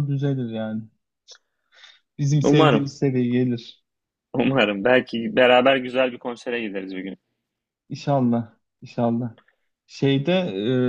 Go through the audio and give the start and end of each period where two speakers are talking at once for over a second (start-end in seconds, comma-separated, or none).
none